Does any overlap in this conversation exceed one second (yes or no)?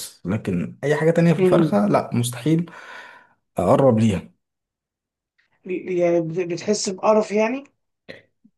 no